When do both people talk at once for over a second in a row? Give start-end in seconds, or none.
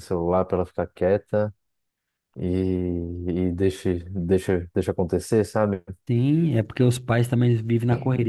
none